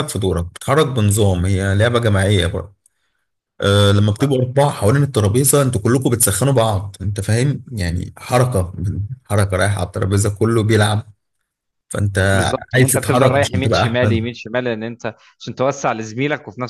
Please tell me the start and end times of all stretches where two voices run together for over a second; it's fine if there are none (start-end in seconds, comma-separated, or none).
12.7-14.3